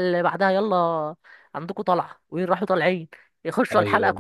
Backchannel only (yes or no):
yes